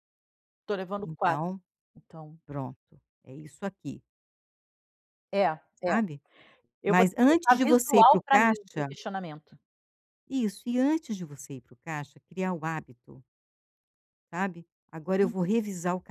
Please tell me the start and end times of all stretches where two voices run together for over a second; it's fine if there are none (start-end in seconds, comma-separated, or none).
6.9-8.9